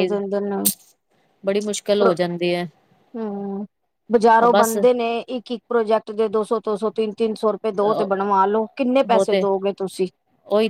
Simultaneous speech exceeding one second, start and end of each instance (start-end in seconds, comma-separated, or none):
none